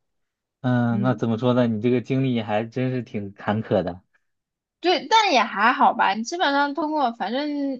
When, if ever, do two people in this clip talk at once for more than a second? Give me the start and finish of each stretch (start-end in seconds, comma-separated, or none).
none